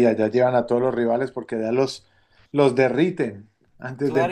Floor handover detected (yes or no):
yes